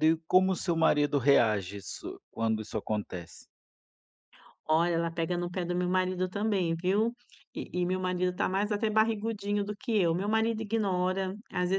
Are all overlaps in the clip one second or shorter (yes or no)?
yes